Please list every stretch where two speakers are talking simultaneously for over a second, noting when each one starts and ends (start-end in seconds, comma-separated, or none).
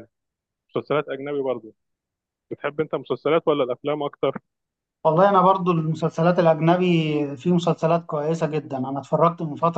none